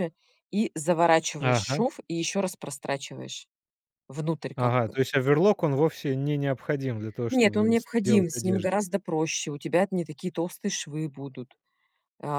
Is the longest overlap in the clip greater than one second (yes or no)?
yes